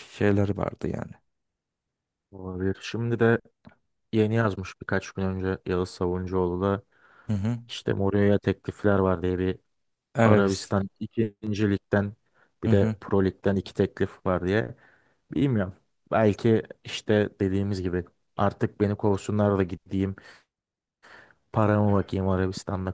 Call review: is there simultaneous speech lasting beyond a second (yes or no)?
no